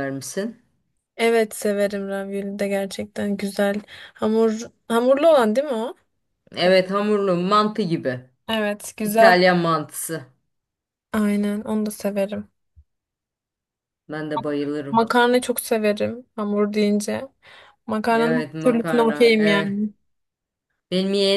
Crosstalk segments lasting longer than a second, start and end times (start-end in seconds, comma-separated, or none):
18.1-19.9